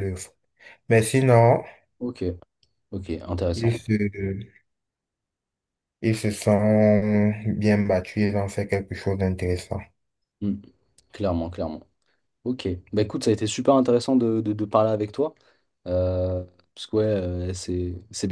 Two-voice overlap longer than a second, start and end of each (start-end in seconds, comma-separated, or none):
none